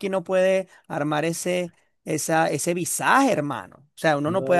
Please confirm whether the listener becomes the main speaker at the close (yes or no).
no